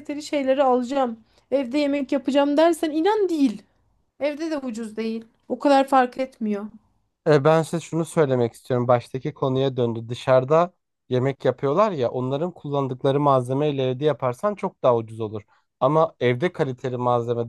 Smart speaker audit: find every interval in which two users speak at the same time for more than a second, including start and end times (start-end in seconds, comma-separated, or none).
none